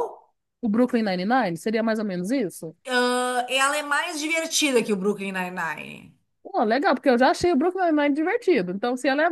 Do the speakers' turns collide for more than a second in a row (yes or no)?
no